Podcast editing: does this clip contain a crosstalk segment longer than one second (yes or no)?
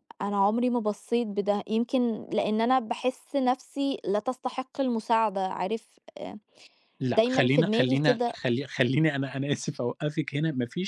yes